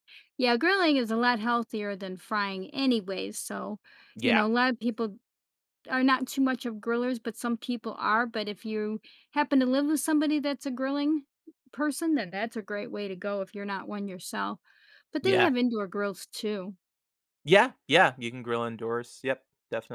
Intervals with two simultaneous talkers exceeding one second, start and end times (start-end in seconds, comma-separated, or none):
none